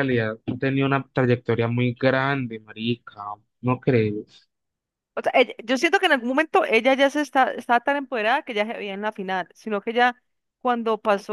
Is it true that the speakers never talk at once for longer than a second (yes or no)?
yes